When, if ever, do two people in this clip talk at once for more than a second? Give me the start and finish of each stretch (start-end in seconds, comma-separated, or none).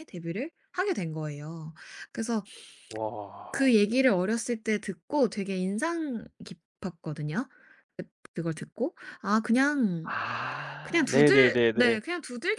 10.8-12.0